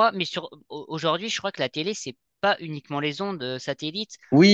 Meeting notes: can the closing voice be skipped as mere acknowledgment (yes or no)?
no